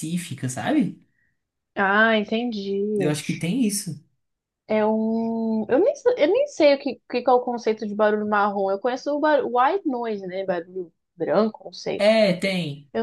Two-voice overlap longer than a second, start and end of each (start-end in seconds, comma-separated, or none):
none